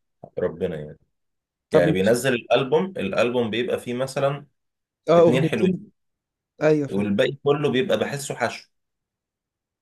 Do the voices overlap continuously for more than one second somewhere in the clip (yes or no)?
no